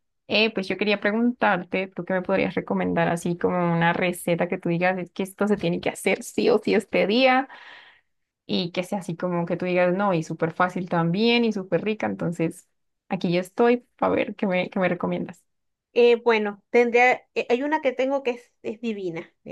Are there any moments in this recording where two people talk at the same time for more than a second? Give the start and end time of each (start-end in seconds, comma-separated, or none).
none